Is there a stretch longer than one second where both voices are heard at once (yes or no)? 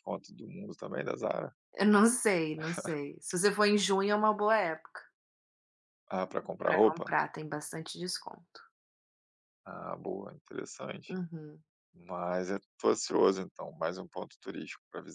no